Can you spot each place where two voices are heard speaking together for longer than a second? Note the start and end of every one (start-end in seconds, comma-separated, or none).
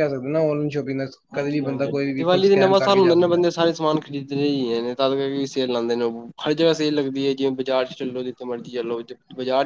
1.3-3.4